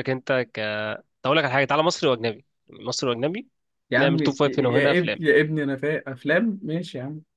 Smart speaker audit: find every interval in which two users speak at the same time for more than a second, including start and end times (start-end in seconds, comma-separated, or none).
4.0-5.2